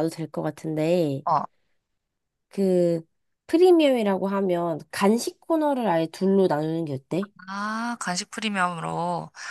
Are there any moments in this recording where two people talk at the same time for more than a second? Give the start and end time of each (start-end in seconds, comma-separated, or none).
none